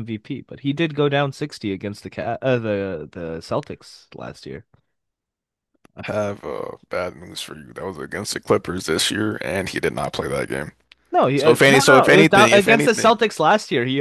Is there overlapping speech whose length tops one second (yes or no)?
yes